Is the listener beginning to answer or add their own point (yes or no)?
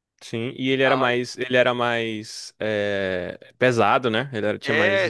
yes